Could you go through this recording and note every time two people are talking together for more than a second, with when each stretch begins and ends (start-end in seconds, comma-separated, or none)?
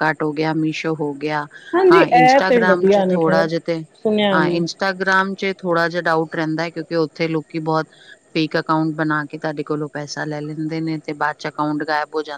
1.9-3.5